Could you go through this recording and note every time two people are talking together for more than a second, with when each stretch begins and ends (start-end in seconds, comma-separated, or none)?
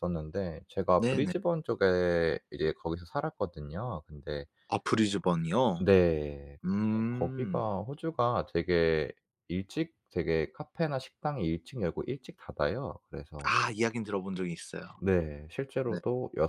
none